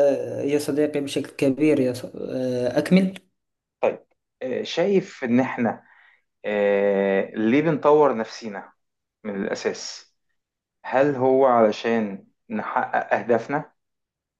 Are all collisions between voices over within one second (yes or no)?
yes